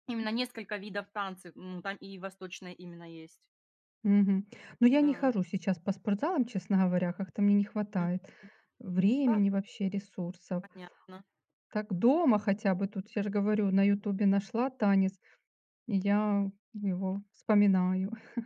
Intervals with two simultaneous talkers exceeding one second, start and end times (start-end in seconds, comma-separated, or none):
none